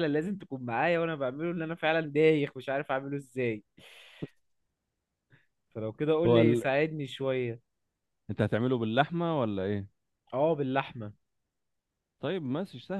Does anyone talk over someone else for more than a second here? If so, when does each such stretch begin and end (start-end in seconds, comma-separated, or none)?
none